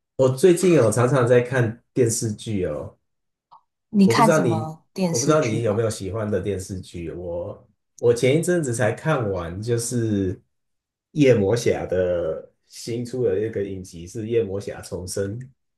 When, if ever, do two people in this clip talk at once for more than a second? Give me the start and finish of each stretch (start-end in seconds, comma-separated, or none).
4.0-5.8